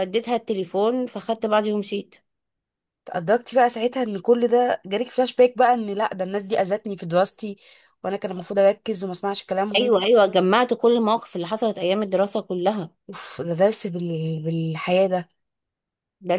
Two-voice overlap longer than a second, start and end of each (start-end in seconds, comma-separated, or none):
none